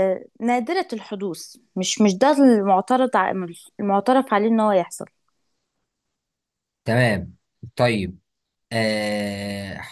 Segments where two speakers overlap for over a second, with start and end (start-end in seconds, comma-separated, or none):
none